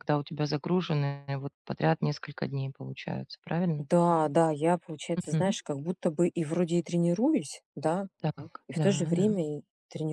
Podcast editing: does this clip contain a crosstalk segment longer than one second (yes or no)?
no